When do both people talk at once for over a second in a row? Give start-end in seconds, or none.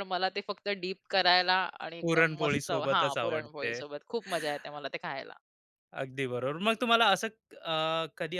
2.0-3.7